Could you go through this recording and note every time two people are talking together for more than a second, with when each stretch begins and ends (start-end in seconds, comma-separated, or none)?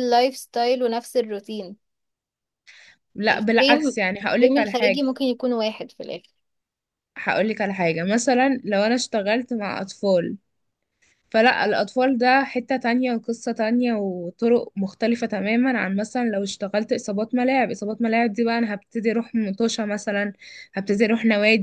3.3-5.0